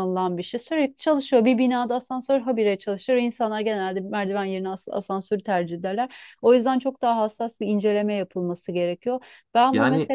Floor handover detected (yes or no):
no